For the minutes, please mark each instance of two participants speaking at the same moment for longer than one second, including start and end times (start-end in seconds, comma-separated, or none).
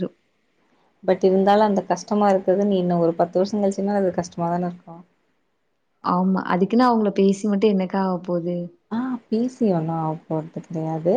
none